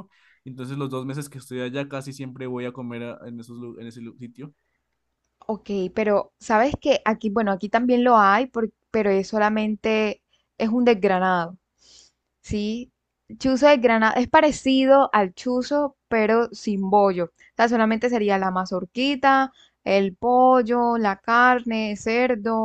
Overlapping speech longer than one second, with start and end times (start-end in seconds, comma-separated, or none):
none